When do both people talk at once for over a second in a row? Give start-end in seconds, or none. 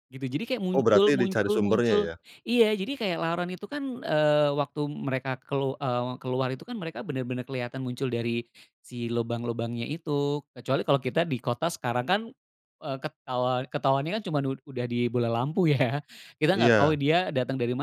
0.7-2.0